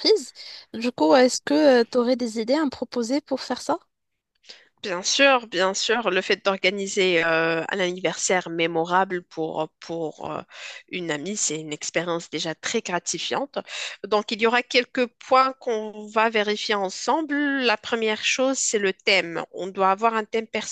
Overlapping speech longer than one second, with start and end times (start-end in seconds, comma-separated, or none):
none